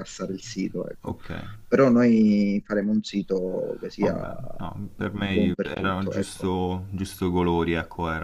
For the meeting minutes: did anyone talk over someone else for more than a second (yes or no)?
yes